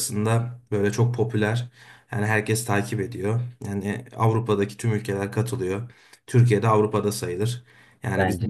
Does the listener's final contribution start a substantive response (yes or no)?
no